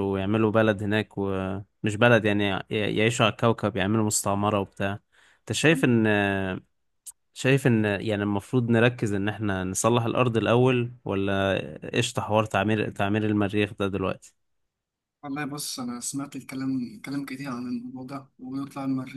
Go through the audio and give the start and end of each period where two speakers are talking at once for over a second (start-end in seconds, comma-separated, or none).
none